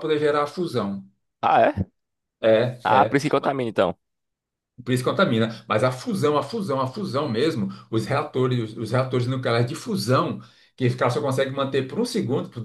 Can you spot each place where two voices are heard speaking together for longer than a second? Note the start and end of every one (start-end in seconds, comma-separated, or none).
none